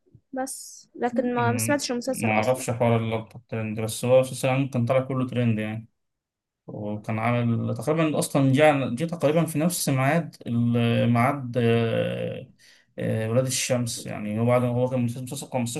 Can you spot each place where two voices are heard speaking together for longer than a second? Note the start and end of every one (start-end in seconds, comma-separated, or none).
1.4-2.6